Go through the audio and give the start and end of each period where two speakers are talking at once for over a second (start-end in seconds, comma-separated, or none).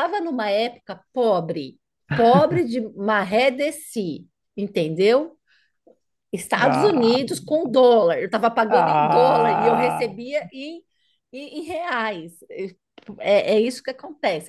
8.7-10.1